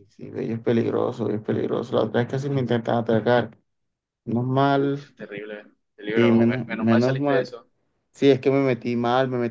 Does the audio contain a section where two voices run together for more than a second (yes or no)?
yes